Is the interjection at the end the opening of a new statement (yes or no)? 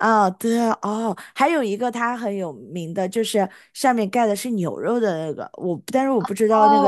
yes